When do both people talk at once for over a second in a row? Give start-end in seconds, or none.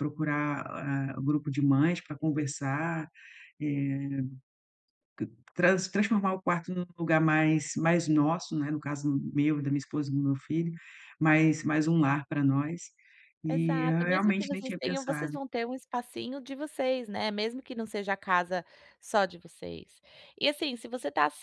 13.5-15.4